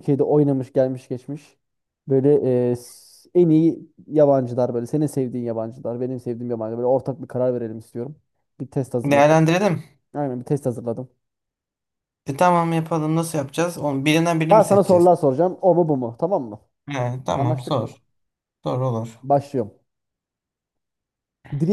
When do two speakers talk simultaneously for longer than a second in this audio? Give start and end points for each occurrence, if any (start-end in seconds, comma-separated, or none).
none